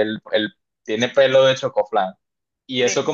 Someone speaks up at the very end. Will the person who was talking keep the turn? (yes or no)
yes